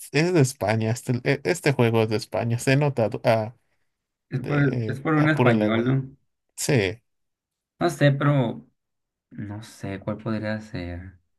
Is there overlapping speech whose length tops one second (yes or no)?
yes